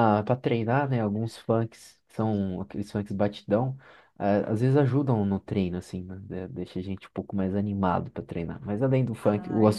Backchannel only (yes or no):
yes